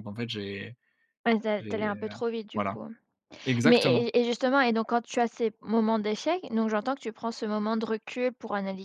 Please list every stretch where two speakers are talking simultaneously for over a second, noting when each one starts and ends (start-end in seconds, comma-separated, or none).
none